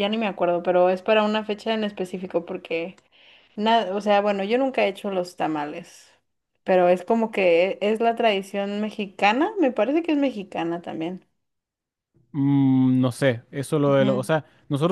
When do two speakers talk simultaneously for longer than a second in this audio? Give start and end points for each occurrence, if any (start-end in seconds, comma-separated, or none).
none